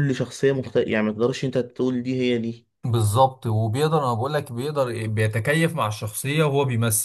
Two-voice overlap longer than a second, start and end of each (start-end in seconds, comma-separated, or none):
none